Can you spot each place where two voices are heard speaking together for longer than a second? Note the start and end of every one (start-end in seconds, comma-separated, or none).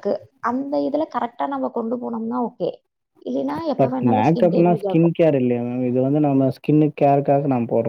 none